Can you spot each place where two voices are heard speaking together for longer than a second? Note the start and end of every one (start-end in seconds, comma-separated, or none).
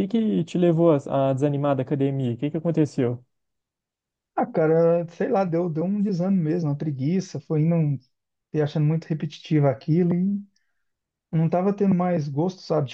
none